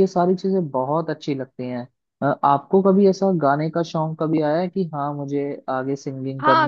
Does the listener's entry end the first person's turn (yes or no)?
yes